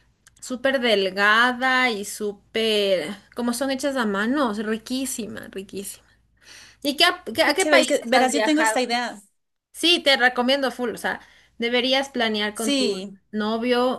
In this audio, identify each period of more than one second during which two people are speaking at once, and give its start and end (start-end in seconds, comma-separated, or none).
7.4-8.8